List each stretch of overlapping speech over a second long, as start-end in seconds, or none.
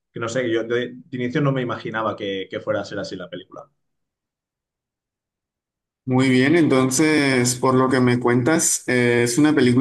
none